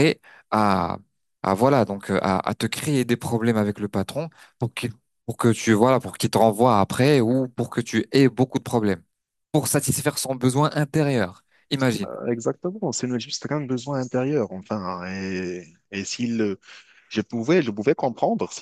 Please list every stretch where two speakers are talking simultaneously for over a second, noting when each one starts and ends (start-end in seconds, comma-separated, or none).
none